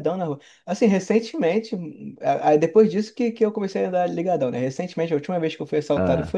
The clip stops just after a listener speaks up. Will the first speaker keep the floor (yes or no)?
yes